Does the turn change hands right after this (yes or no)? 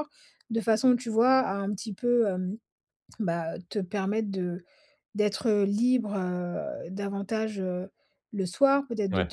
no